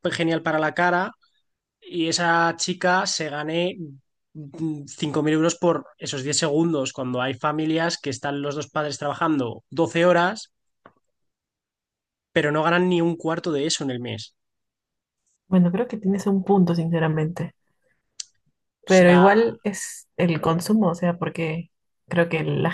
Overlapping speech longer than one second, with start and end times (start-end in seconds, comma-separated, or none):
none